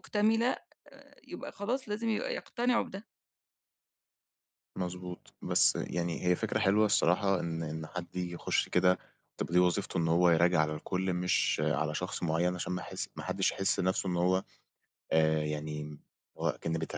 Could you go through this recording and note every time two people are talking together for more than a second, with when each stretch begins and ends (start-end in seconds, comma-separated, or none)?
none